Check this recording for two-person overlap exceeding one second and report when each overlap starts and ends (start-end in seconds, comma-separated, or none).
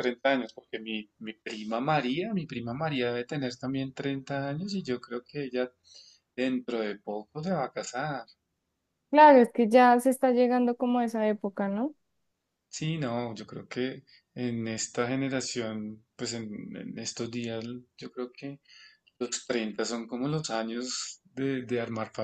none